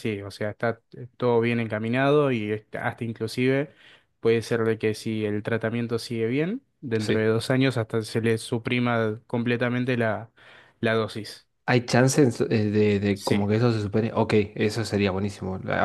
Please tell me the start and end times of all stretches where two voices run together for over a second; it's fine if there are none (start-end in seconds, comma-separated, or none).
none